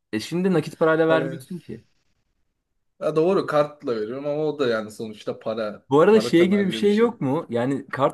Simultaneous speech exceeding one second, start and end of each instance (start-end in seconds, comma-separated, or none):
5.9-7.2